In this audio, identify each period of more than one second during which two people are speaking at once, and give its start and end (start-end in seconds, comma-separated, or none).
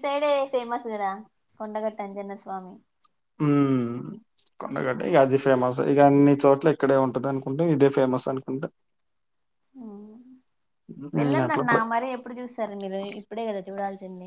none